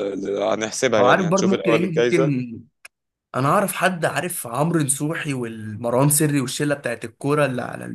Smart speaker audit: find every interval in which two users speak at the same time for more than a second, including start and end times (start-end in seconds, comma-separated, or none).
1.0-2.3